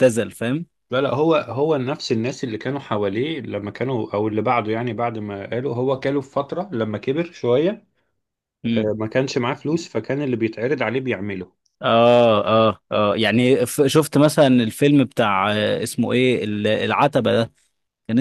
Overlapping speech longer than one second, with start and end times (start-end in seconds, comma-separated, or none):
none